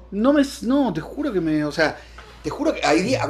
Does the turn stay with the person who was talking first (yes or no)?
yes